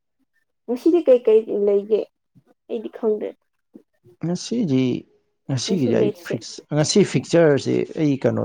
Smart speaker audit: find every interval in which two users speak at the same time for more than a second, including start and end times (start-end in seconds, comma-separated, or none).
none